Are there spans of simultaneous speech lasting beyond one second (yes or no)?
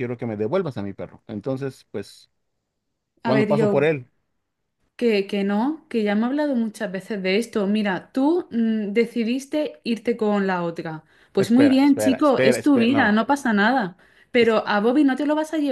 yes